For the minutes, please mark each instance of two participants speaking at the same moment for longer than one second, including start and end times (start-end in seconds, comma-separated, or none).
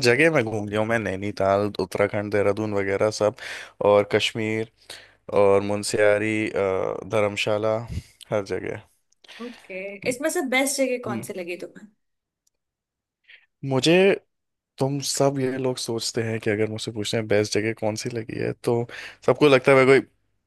none